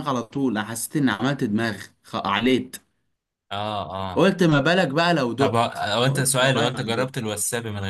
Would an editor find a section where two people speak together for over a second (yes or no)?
yes